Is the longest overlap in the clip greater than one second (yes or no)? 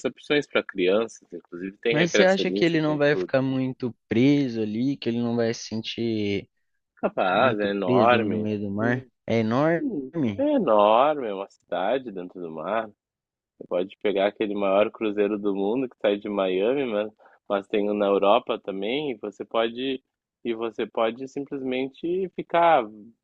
yes